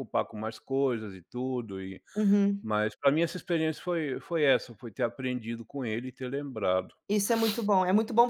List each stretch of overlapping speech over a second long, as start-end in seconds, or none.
none